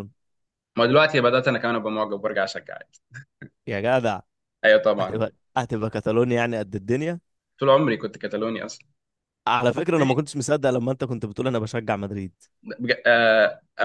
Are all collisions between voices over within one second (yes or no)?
yes